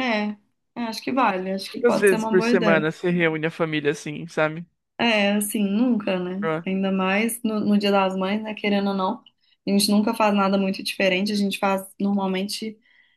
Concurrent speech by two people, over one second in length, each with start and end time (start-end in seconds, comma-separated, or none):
1.7-2.9